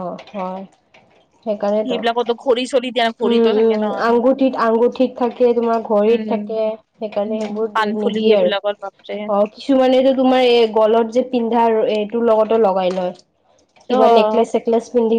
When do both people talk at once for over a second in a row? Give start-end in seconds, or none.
7.2-9.1